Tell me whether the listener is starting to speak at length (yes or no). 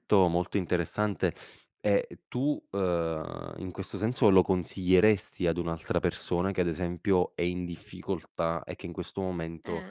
no